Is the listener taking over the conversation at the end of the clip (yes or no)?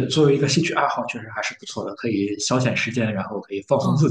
yes